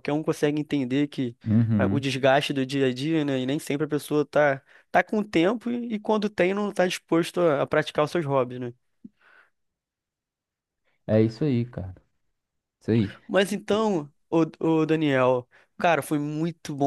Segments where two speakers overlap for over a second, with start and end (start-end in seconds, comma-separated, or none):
none